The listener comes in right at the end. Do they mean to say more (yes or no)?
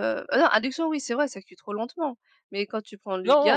no